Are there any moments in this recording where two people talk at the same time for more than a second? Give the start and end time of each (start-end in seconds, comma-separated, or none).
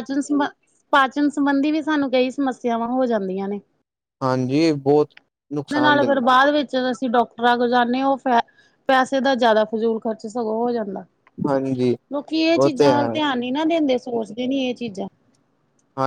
none